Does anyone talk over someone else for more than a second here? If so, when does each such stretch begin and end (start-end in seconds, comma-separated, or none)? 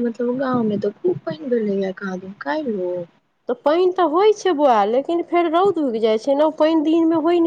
none